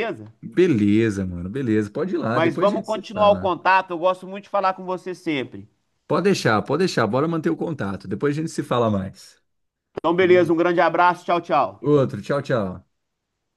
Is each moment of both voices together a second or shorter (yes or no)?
no